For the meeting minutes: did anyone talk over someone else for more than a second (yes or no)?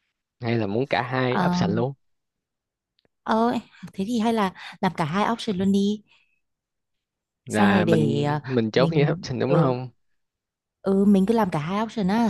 yes